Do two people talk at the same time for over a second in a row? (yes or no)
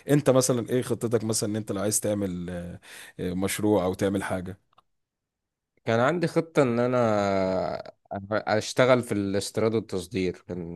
no